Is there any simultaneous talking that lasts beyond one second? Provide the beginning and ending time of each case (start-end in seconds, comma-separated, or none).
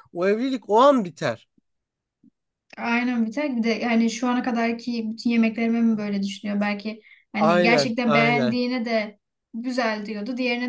7.4-8.6